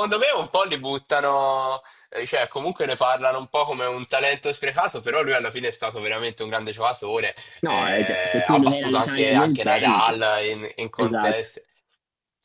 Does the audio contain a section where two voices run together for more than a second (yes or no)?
yes